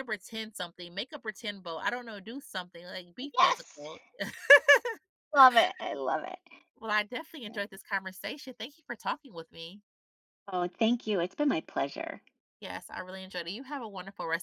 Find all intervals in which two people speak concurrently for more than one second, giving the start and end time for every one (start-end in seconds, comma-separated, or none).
none